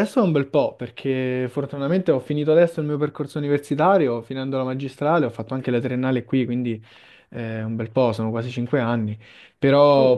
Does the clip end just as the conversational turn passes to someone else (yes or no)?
no